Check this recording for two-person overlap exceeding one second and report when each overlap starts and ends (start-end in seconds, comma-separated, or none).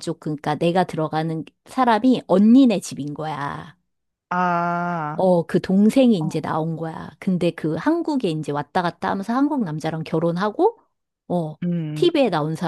none